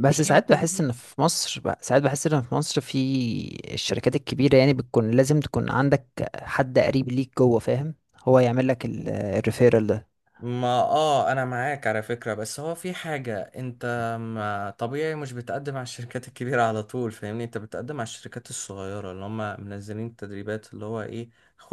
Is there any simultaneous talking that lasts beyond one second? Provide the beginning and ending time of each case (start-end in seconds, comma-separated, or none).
none